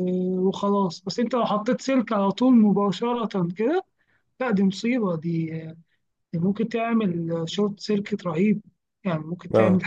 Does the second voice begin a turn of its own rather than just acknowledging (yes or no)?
yes